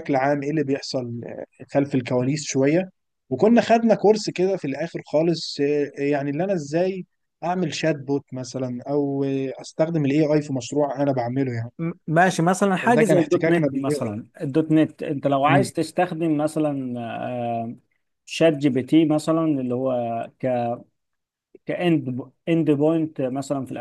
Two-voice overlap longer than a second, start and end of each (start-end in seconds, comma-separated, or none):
12.8-14.1